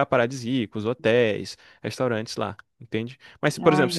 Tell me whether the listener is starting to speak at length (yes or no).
no